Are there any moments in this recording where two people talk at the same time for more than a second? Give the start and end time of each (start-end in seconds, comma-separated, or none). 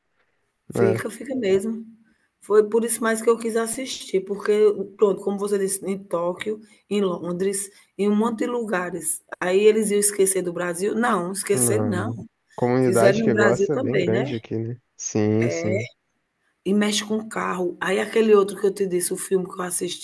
12.8-14.3